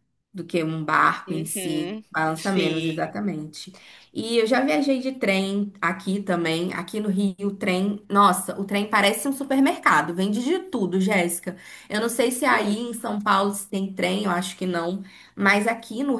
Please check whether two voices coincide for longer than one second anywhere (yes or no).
yes